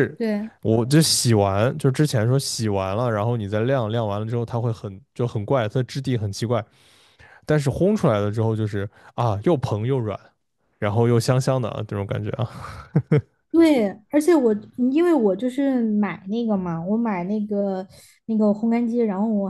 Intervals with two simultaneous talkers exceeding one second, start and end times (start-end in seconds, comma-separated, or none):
none